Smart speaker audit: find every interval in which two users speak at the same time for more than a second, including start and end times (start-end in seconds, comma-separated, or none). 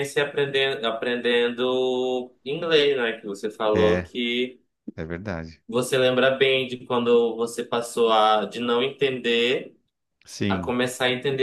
none